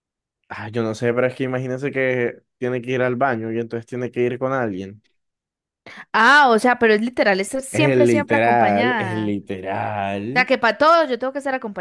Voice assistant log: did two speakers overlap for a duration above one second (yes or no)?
yes